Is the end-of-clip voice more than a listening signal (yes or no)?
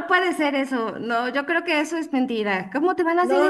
yes